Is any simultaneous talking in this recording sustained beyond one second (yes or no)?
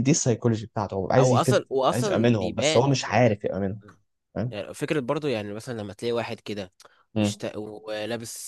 yes